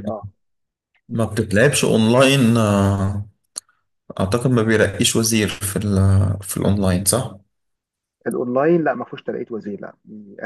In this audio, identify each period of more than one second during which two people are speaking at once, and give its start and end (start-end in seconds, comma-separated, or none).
none